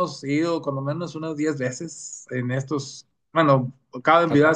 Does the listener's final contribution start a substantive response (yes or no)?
no